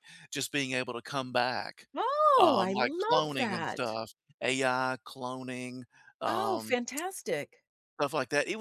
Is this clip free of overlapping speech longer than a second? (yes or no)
no